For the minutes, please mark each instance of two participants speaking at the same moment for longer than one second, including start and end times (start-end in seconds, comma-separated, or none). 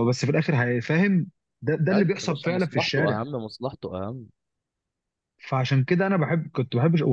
1.9-3.2